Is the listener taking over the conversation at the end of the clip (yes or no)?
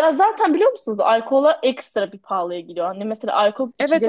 no